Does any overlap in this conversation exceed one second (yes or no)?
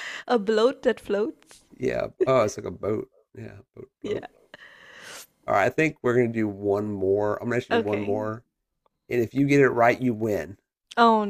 no